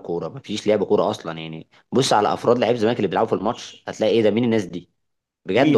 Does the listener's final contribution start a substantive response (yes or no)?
yes